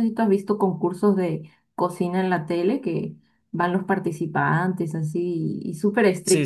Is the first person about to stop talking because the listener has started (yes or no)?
yes